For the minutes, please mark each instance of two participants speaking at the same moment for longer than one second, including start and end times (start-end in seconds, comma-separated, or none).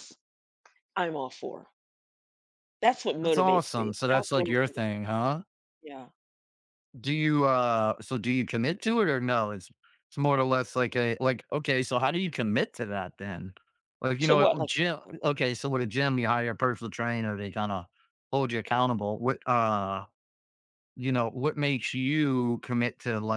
3.2-4.7